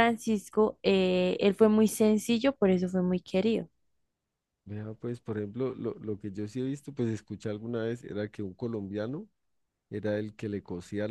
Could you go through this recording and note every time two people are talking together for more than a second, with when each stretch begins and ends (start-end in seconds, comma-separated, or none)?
none